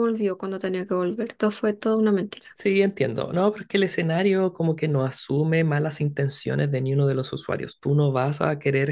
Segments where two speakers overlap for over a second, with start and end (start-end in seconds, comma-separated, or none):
none